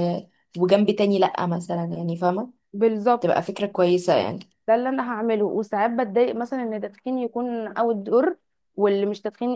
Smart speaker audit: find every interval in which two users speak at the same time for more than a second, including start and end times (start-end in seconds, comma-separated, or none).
none